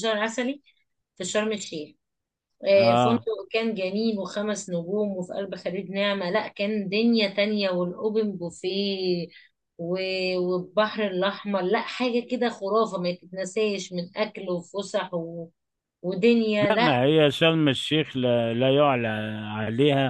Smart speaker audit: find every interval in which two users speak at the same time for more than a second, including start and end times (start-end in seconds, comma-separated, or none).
none